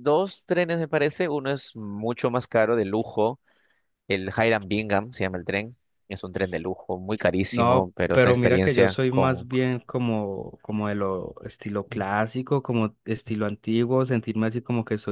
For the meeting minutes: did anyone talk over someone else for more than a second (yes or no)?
yes